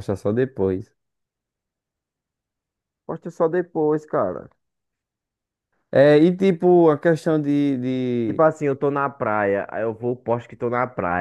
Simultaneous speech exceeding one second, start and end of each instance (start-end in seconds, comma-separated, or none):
none